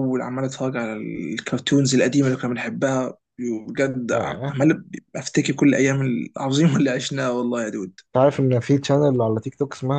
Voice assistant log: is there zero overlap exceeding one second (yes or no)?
yes